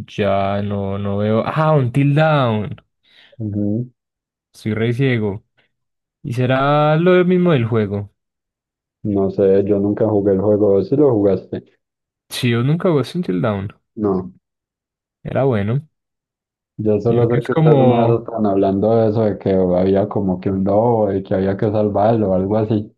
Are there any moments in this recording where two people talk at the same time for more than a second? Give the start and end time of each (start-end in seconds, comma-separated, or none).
17.1-18.3